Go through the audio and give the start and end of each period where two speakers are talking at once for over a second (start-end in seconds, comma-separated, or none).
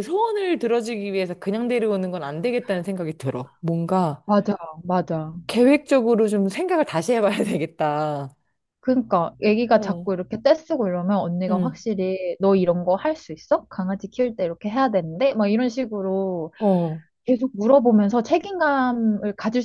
none